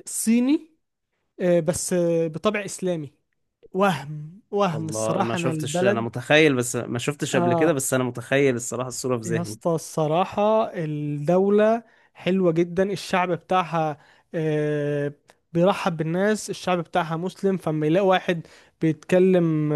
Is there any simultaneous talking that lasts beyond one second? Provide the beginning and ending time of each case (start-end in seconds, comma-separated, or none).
4.7-6.1